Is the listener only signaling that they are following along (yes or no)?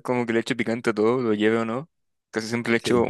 yes